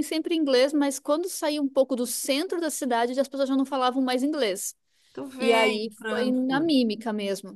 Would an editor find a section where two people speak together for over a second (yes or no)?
yes